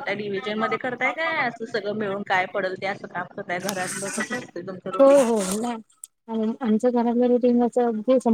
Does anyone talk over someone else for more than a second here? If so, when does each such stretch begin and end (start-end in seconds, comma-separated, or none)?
none